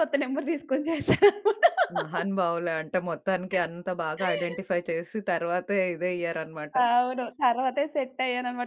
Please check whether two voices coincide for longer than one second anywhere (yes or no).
no